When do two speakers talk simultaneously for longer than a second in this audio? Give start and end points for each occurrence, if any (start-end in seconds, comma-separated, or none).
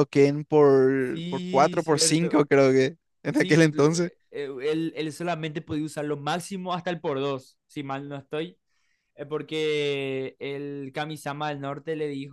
1.0-2.4